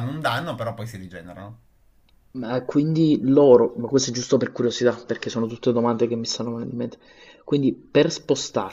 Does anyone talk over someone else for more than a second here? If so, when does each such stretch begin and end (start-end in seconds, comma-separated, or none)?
none